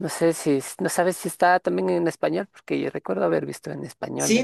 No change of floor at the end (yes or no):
no